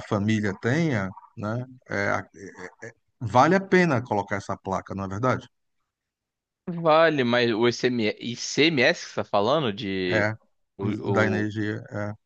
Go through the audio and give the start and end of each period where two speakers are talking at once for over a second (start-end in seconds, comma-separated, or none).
none